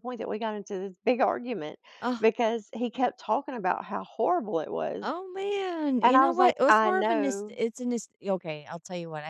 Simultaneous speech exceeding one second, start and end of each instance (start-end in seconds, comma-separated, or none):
6.0-7.6